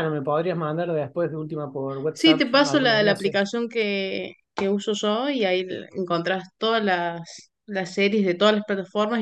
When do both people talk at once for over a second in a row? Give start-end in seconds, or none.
2.1-3.4